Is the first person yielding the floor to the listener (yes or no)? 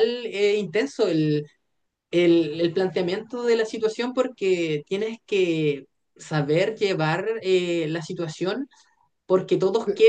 no